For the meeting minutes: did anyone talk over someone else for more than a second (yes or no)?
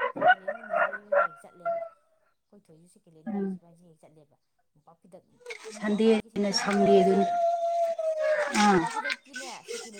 yes